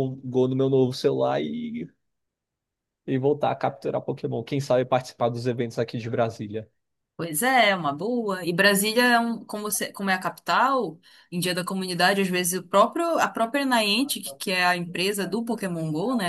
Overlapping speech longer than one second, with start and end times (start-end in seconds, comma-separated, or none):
none